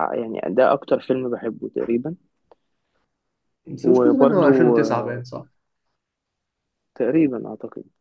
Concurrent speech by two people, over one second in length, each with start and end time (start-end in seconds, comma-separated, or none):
3.8-5.2